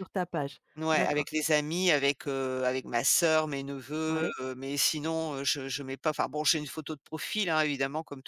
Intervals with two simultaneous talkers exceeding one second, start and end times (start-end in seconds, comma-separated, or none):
none